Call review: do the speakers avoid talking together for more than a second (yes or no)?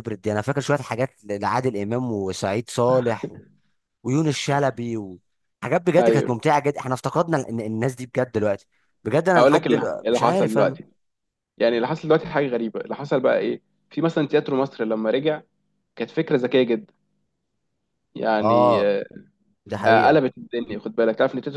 no